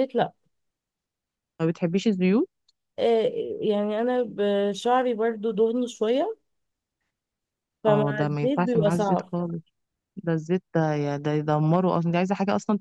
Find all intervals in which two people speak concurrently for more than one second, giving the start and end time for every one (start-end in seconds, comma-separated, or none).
7.9-9.3